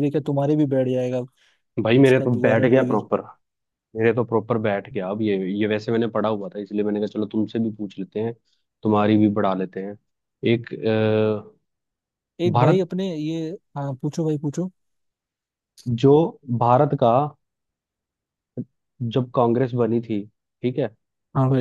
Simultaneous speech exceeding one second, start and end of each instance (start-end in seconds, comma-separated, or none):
1.8-3.0